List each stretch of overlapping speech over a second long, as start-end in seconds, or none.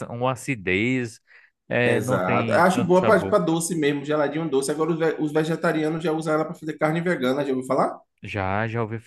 1.8-3.4